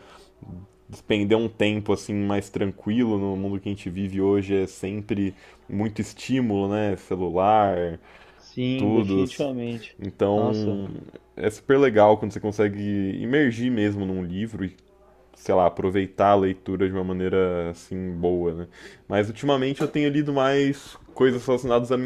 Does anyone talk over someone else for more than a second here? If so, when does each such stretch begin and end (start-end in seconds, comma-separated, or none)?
none